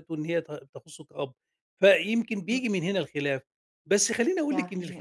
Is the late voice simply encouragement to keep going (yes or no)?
yes